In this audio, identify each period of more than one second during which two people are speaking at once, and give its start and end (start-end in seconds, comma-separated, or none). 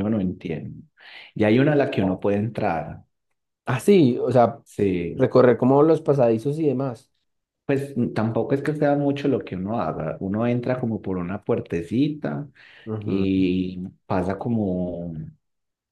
none